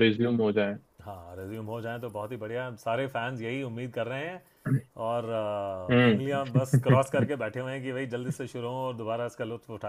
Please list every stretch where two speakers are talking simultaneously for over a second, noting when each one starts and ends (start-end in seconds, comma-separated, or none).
5.9-7.3